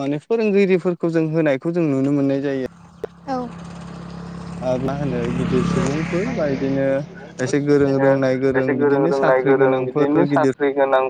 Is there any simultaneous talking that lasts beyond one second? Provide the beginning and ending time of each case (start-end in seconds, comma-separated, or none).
8.8-10.5